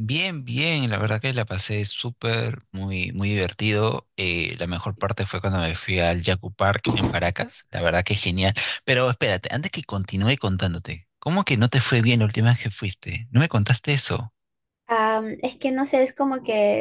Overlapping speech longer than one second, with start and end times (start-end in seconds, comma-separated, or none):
none